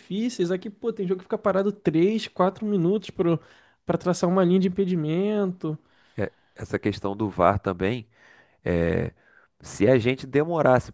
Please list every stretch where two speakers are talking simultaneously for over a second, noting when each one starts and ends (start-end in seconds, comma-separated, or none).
none